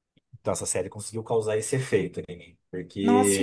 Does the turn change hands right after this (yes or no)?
yes